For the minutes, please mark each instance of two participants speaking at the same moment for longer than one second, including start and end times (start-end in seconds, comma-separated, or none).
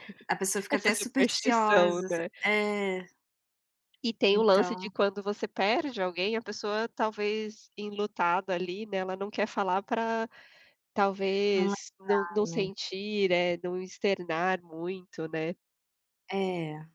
0.7-2.3